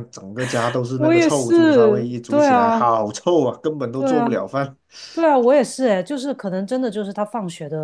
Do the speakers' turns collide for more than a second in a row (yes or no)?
yes